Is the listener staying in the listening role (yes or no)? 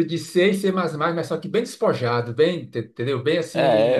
no